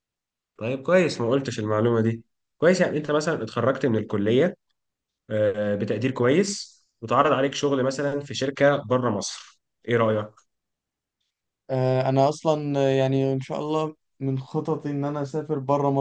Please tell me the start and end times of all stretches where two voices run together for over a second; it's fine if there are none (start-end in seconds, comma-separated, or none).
none